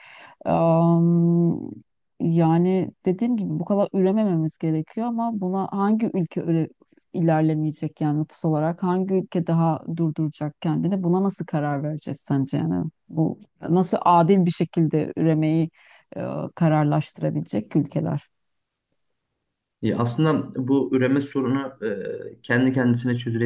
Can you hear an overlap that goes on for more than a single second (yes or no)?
no